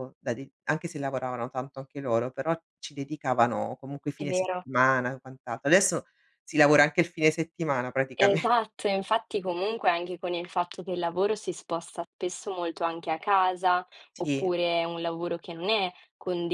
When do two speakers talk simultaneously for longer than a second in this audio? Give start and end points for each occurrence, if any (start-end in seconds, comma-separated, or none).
none